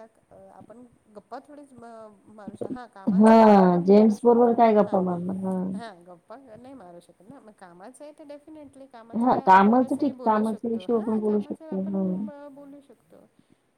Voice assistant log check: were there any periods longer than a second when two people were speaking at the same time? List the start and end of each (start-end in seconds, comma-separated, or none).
3.2-5.0, 9.2-12.0